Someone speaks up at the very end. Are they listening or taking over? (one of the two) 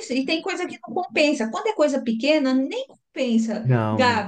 listening